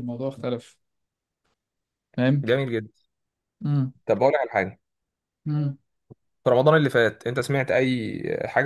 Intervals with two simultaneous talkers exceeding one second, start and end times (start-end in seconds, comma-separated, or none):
none